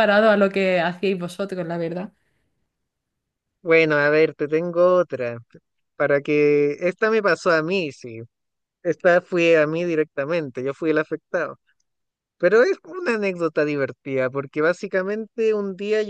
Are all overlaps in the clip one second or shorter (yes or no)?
yes